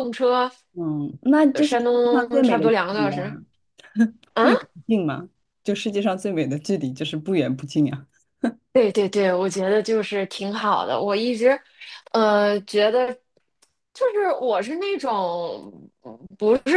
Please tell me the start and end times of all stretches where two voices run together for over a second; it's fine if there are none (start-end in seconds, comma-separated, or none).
1.5-3.4